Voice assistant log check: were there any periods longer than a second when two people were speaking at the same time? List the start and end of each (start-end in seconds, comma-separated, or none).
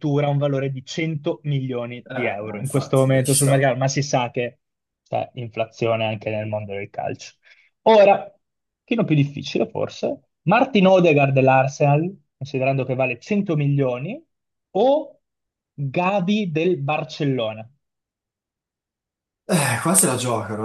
2.0-3.7